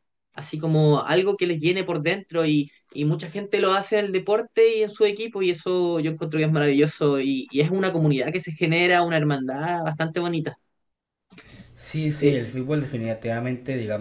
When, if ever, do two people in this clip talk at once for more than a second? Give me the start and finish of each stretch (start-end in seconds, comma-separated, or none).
none